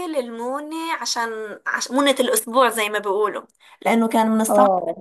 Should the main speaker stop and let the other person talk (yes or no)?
no